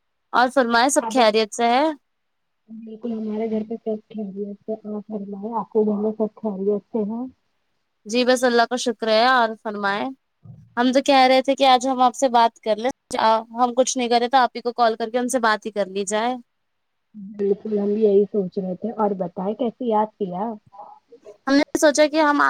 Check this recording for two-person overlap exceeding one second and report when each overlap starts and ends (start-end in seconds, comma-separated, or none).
none